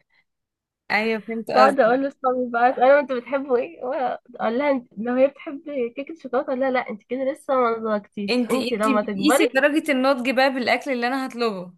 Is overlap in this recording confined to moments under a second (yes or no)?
no